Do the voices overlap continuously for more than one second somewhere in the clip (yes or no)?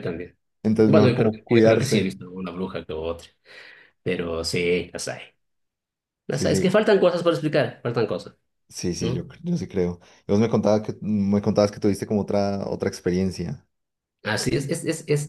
yes